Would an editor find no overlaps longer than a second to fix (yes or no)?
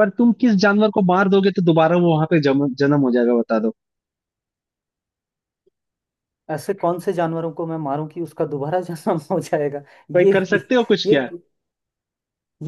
yes